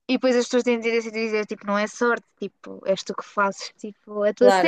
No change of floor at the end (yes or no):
no